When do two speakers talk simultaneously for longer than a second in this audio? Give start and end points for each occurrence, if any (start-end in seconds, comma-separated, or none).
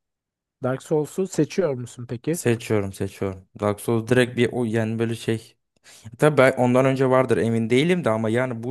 none